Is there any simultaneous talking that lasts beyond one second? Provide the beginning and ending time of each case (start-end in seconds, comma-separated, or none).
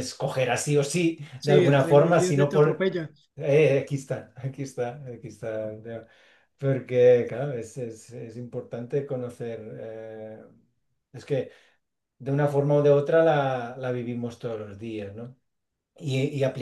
1.4-2.8